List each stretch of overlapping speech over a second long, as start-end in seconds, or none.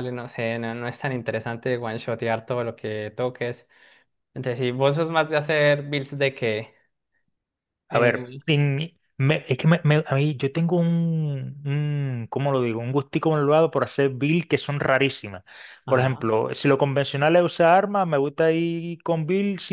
none